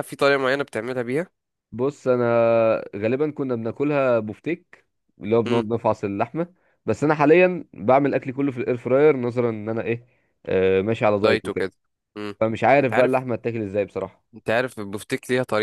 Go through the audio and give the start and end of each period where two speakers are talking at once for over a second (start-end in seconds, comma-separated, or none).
none